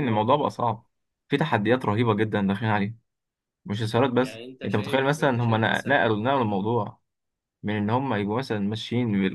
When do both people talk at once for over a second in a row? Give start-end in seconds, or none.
4.2-6.1